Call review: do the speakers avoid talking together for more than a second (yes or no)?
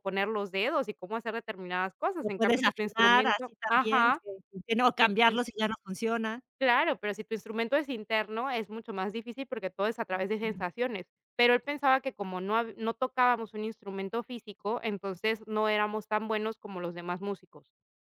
no